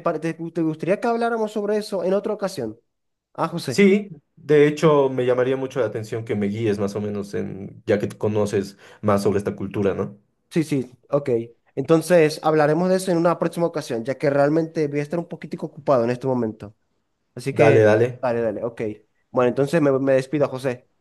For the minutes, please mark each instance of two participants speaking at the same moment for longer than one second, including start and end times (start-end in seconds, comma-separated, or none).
none